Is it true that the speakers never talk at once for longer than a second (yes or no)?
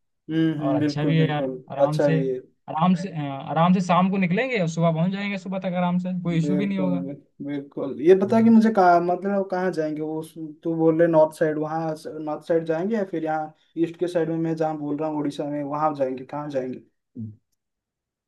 no